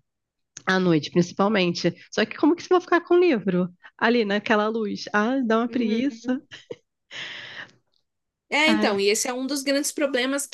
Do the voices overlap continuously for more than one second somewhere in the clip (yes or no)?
no